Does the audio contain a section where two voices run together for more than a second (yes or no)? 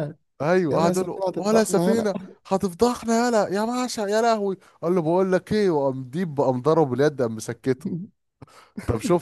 yes